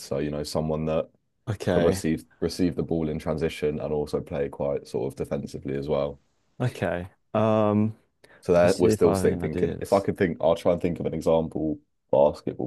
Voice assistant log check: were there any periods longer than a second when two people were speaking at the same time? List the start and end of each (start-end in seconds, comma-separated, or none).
8.6-10.1